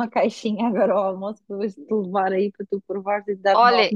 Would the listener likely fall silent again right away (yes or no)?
no